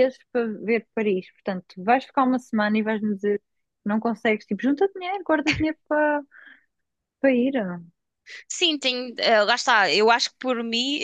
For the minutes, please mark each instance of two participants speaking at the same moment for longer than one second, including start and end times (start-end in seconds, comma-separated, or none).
none